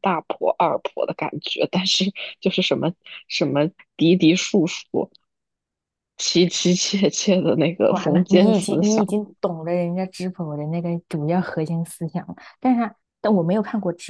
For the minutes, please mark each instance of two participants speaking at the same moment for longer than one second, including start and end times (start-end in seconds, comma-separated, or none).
7.9-9.2